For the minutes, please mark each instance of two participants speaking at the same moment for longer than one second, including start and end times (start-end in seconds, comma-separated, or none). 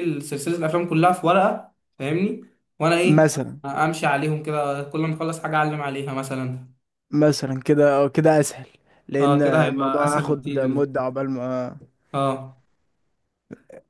9.2-11.1